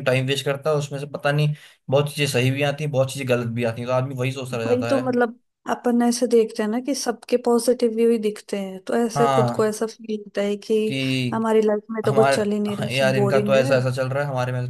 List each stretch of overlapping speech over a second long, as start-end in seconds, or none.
12.1-13.8